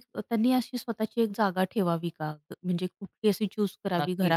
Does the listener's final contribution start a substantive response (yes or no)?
yes